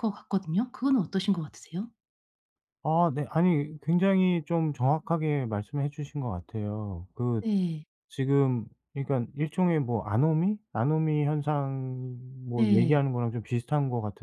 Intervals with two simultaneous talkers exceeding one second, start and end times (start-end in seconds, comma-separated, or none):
none